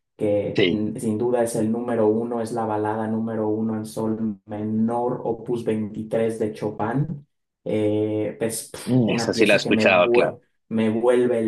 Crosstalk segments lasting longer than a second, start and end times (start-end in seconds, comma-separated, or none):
8.9-10.4